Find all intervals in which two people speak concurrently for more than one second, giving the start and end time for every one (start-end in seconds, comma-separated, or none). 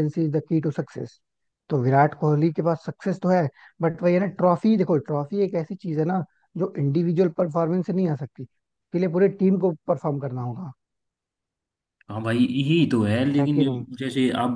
none